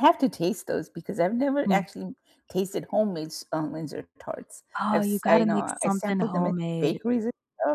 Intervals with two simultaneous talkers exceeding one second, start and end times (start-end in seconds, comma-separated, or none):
4.8-7.0